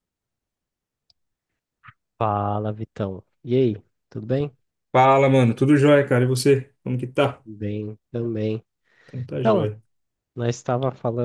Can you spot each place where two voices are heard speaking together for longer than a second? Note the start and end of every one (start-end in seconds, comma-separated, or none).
none